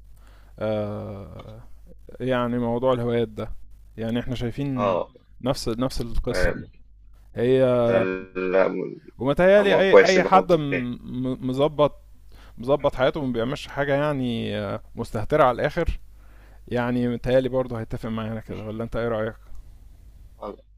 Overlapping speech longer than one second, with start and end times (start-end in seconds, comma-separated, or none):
9.6-10.8